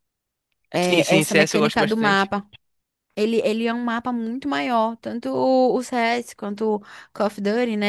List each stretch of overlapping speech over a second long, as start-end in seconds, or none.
0.8-2.3